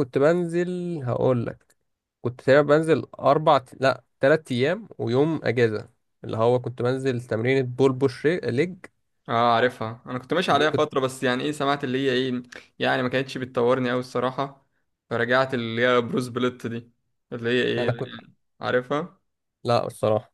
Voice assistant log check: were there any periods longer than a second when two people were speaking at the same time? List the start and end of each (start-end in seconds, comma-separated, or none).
none